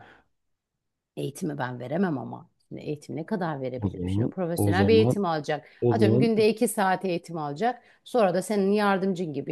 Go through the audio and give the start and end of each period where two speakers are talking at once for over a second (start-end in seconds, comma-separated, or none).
3.8-5.2